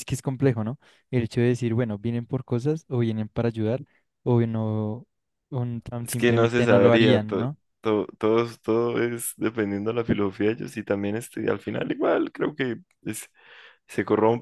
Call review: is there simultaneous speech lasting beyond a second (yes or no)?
yes